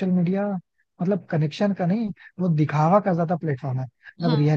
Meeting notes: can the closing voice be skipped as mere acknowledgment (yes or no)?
yes